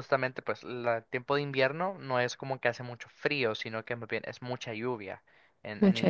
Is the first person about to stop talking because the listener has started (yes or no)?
no